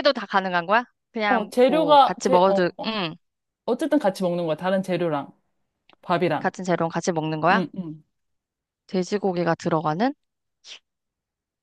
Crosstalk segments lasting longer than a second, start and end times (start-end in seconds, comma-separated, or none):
1.3-2.9